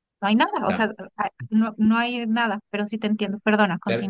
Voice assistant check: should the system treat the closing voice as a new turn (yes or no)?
yes